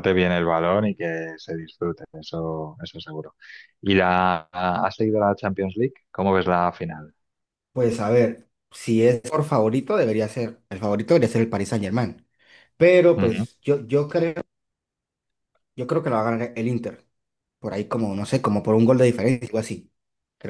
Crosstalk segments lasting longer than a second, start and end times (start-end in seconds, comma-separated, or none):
none